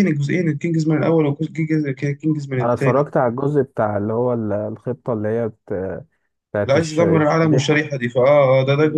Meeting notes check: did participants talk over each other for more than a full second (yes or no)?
yes